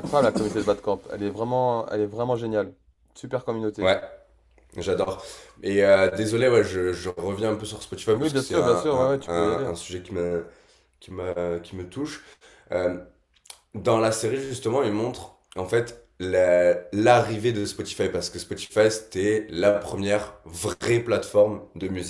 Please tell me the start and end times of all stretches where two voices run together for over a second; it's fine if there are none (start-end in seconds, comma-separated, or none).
8.1-9.7